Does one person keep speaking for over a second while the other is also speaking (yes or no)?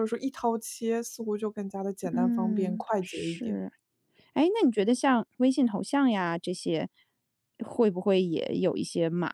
yes